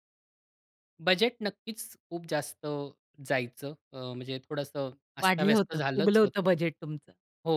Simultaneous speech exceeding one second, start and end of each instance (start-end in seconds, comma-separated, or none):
5.2-6.5